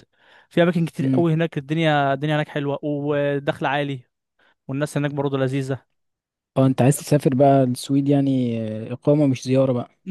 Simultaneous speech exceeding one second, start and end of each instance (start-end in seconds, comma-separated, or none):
none